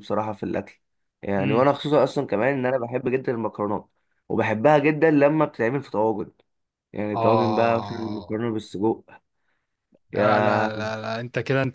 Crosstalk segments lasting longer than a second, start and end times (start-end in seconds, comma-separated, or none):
7.1-8.4